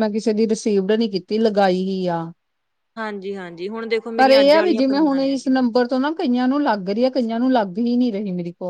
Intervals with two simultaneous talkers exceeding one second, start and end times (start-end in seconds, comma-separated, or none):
4.2-5.5